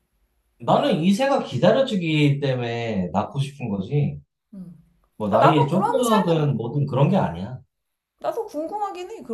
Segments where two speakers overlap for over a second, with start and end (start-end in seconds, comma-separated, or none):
5.3-6.6